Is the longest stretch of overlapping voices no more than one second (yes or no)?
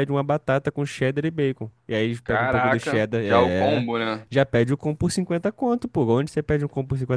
no